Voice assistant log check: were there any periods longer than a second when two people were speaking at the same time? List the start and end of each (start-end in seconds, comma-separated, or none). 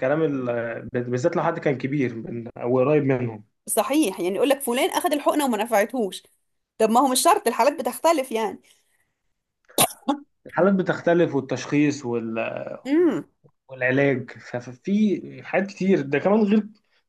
none